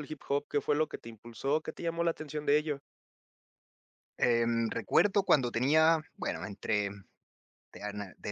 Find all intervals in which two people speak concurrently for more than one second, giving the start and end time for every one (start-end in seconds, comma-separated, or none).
none